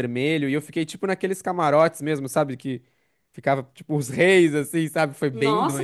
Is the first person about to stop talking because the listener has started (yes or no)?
yes